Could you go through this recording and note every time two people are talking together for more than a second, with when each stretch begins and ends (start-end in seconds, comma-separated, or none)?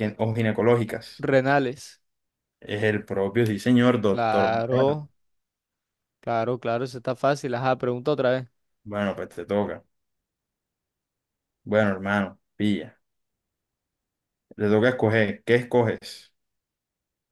none